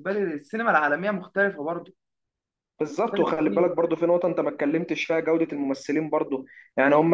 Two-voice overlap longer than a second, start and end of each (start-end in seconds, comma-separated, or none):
none